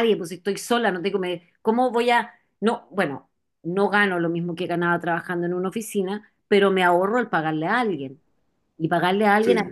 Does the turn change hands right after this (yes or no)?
no